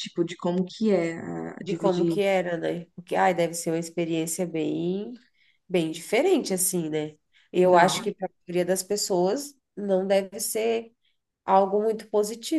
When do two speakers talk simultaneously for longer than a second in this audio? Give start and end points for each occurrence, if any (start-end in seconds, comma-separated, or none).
none